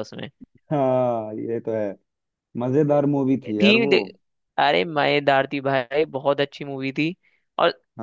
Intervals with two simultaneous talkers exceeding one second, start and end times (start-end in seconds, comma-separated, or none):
none